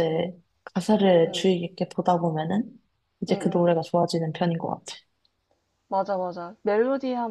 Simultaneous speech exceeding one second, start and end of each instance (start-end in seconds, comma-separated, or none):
none